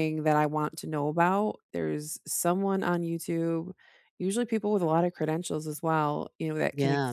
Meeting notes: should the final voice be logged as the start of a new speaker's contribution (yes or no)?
no